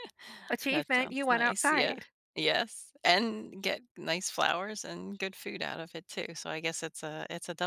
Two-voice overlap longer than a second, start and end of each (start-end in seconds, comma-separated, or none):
0.7-2.1